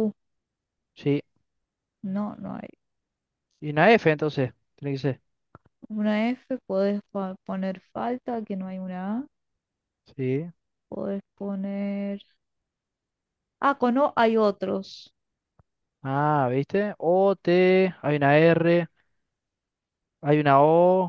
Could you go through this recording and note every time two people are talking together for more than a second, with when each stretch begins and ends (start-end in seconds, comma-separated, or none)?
none